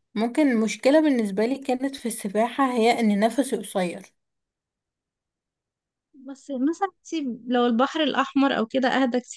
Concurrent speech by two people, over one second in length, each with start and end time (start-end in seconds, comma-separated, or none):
none